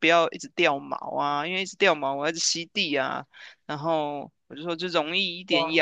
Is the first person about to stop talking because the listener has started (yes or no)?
no